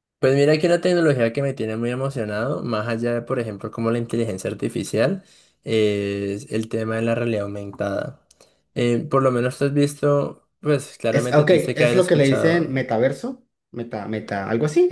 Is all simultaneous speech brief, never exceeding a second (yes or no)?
no